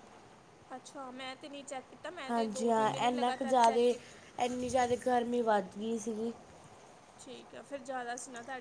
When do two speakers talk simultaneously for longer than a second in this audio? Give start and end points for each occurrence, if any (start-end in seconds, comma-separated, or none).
2.3-3.9